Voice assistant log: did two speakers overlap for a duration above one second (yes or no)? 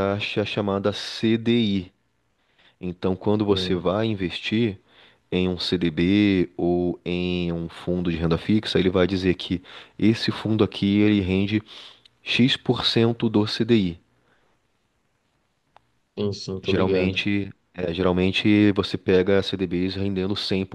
no